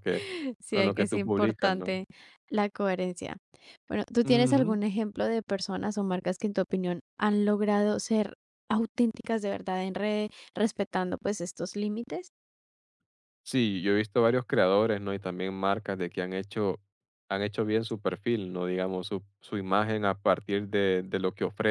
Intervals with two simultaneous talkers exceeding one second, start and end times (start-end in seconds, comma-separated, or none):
0.7-2.0